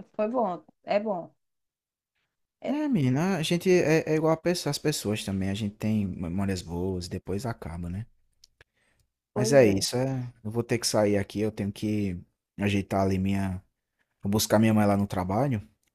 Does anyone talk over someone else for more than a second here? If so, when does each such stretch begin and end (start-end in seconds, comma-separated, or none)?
none